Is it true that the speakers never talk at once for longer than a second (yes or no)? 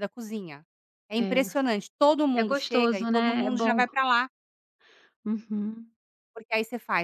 no